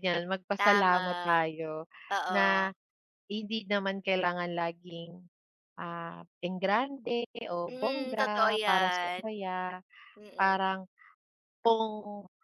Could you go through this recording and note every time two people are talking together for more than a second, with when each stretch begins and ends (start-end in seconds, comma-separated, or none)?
7.7-9.2